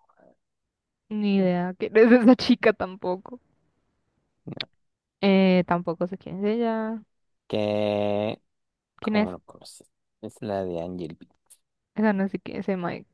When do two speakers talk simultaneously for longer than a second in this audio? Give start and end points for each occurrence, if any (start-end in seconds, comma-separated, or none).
none